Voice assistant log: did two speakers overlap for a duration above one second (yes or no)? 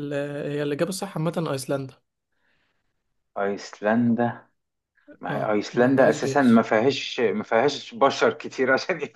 yes